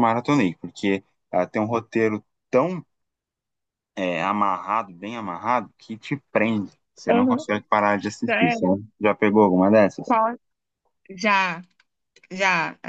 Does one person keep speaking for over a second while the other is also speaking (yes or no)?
no